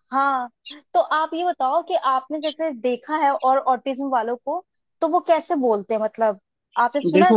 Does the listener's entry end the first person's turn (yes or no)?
yes